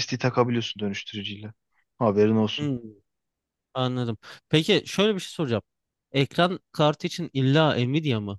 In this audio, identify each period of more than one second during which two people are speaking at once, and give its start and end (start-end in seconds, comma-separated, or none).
none